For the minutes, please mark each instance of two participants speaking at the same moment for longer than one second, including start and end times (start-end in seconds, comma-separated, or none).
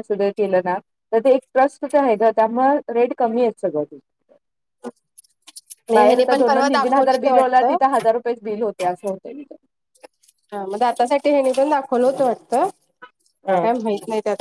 5.9-7.8